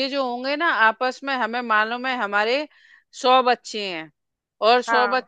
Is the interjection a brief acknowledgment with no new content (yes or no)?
yes